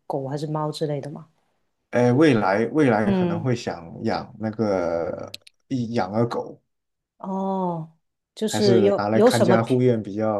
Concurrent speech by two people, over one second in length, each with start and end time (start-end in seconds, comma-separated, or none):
8.5-9.8